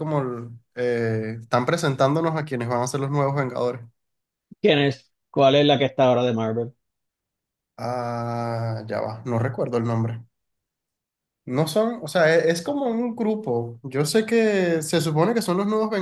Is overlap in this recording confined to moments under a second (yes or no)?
yes